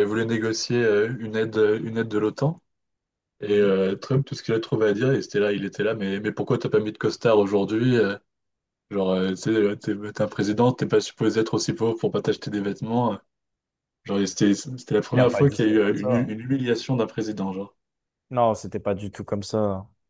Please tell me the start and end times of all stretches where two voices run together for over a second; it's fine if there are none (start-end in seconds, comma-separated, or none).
15.1-16.4